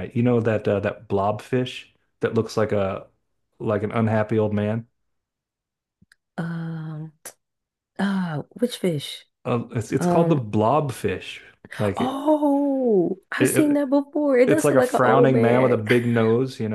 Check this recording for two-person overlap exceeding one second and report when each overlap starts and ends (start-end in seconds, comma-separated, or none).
14.4-15.7